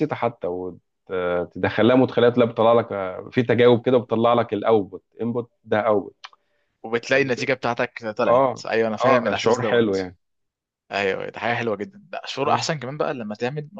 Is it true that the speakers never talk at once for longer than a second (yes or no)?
no